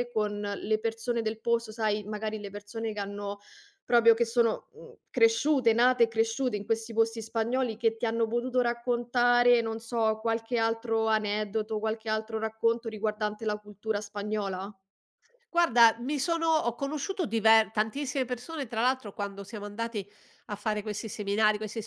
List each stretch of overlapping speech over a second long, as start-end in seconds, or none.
none